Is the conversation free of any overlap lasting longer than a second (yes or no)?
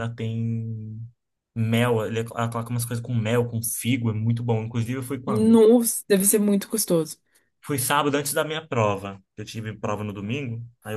yes